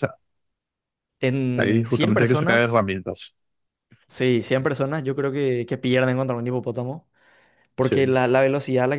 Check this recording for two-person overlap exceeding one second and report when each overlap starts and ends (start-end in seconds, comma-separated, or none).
1.6-2.9